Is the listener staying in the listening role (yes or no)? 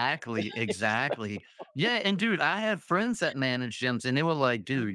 yes